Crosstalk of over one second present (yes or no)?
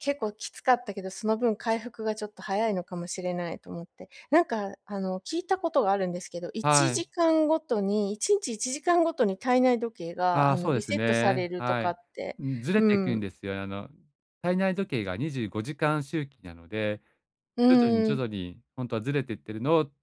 yes